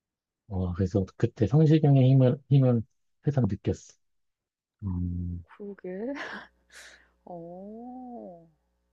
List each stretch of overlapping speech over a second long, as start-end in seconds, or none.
none